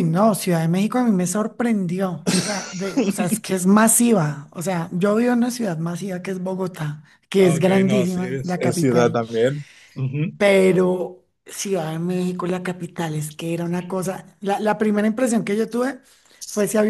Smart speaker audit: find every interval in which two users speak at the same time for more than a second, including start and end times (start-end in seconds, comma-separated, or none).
7.4-9.2